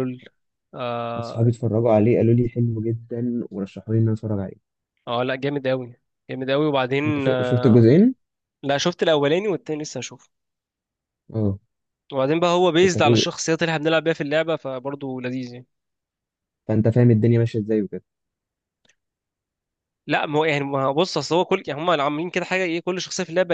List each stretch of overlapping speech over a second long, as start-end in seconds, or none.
none